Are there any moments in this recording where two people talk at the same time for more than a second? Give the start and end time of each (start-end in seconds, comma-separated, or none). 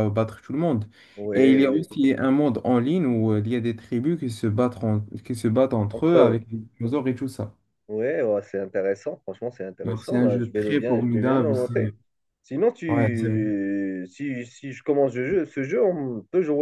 9.9-11.9